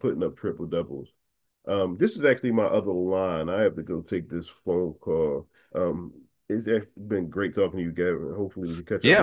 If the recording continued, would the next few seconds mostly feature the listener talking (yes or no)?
yes